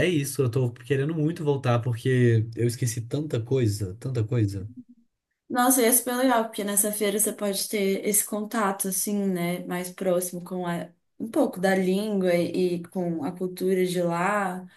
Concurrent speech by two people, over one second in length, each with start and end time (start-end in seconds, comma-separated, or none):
none